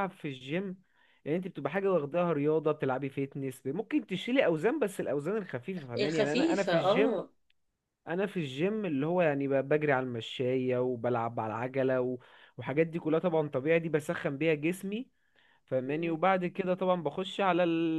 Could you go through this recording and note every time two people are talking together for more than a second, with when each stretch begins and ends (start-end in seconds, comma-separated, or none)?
6.0-7.2